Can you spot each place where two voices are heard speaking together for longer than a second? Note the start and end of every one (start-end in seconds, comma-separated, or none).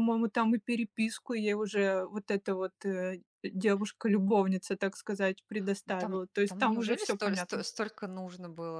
5.9-7.6